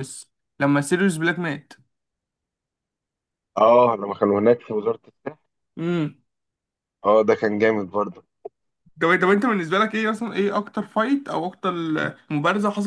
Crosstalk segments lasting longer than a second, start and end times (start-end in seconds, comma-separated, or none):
none